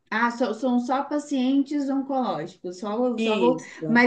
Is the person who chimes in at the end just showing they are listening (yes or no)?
yes